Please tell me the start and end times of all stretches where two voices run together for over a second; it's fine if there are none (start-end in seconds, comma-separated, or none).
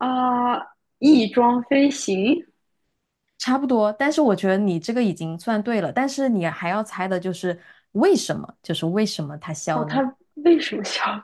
none